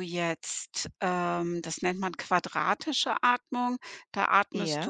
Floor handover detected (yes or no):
no